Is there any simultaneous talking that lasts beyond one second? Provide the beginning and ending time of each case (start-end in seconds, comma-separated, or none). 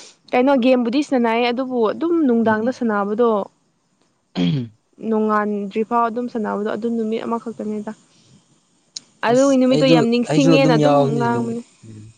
9.3-11.6